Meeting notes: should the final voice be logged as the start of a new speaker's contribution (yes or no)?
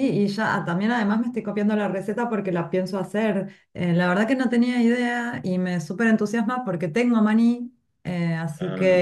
no